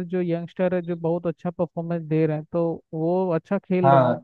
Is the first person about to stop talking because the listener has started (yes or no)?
yes